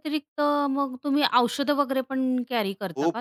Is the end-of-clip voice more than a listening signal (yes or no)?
yes